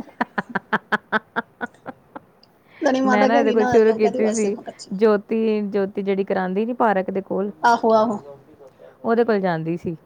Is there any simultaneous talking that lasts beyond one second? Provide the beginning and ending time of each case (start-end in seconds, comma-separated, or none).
3.0-4.5